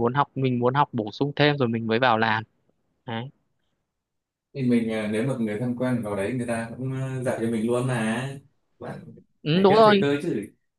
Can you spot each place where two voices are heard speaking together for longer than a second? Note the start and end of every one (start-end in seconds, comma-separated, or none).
none